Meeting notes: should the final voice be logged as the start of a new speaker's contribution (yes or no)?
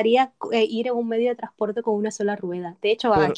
no